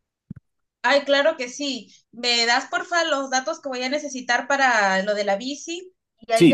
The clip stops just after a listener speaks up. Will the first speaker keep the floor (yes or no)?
no